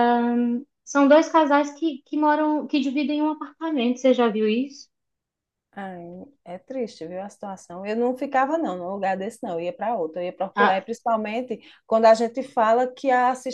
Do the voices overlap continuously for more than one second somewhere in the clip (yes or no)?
no